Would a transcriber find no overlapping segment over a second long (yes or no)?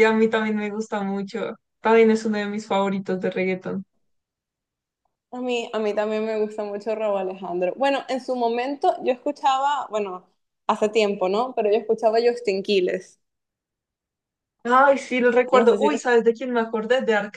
yes